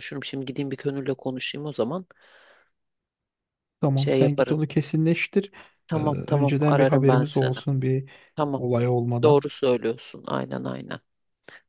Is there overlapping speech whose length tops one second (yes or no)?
yes